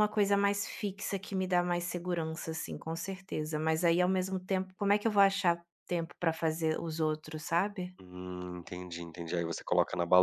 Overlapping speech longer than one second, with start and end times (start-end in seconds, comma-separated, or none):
none